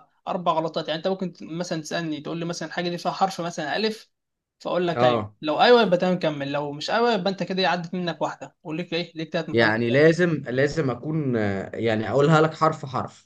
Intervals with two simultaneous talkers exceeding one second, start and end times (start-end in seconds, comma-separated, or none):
none